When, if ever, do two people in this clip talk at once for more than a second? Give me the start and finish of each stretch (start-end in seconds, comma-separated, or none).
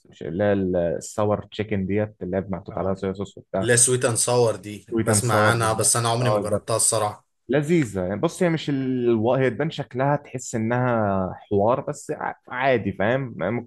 4.9-6.7